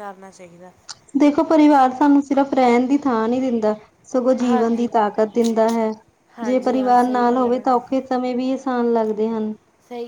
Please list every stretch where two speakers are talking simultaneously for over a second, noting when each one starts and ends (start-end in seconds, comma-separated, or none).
6.4-7.8